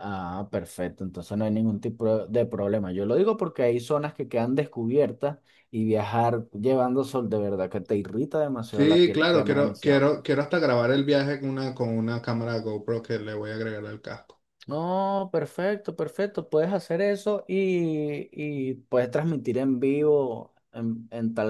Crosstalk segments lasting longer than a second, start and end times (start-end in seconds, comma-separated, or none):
8.7-10.1